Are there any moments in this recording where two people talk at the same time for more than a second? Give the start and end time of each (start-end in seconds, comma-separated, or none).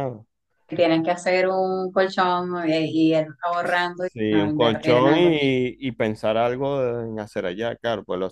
4.1-5.5